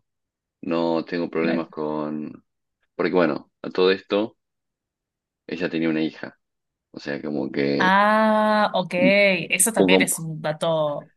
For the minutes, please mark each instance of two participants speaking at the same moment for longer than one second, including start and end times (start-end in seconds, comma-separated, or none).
none